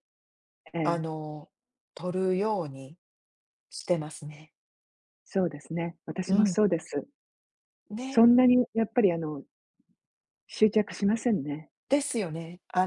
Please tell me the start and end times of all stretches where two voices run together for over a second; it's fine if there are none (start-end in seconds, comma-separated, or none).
none